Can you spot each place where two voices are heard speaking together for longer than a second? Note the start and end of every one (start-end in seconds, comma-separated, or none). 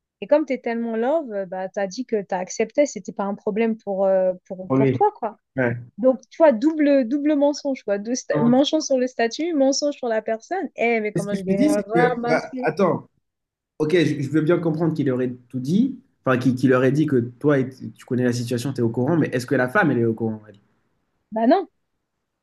11.1-12.7